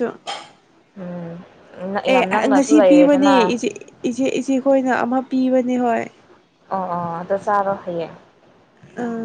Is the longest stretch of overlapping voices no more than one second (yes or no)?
no